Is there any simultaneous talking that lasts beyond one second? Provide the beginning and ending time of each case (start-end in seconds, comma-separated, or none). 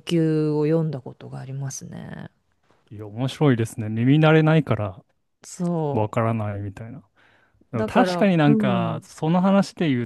7.7-9.0